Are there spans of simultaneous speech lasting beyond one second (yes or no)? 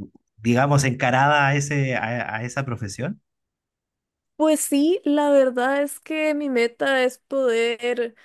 no